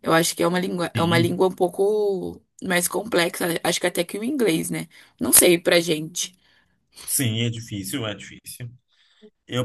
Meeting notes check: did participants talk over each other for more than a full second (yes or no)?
no